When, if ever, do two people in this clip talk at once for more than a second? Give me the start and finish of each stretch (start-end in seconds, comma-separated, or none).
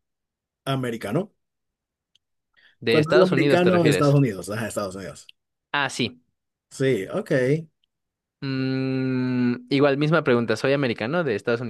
2.9-4.1